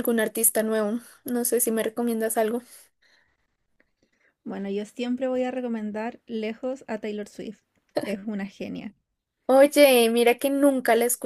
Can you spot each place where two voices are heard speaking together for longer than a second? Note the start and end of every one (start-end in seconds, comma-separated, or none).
none